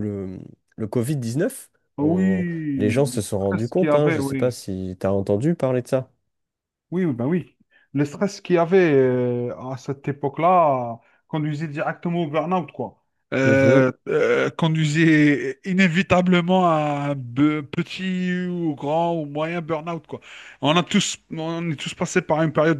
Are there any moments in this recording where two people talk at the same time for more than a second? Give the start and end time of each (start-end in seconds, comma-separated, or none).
2.0-4.5